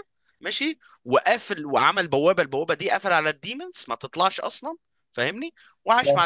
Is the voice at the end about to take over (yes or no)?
no